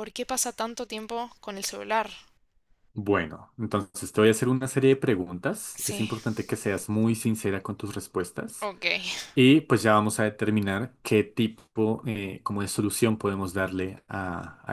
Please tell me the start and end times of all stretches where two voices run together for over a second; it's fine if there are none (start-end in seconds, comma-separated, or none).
none